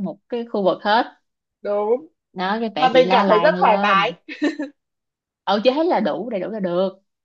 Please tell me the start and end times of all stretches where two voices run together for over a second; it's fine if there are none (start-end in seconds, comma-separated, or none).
2.8-4.1